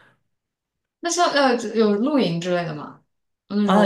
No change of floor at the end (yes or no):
no